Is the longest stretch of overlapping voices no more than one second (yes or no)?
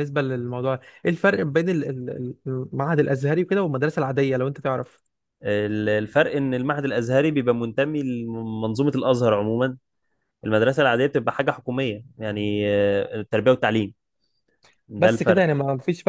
yes